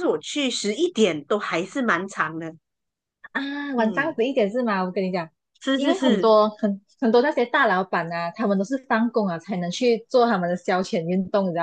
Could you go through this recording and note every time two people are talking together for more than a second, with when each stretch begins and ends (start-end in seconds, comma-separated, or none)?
none